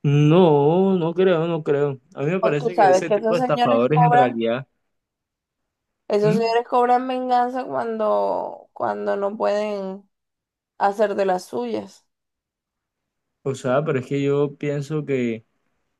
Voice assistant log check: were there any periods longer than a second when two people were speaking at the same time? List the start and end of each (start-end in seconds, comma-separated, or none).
2.4-4.4